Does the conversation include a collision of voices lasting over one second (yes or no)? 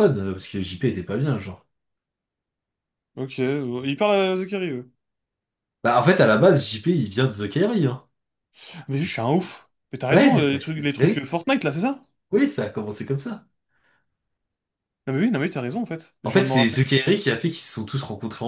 yes